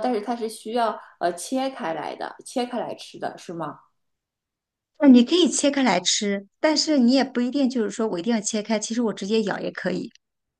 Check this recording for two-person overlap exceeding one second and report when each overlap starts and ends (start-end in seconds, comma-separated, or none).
none